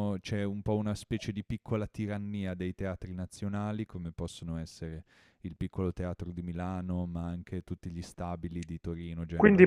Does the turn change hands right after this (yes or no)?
yes